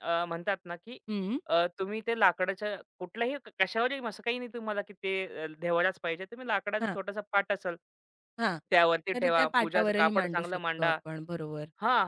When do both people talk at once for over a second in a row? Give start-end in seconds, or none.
9.1-11.0